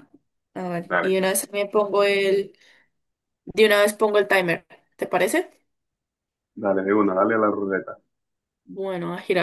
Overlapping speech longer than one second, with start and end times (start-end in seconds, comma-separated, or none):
none